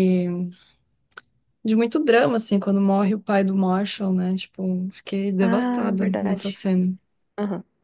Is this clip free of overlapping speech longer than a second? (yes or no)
no